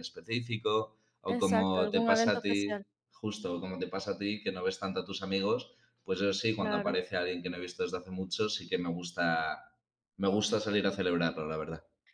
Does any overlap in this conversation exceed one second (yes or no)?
yes